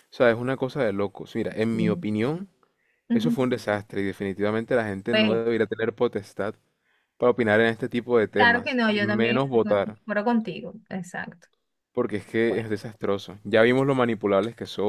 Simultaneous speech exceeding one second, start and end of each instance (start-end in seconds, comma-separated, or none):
8.4-10.0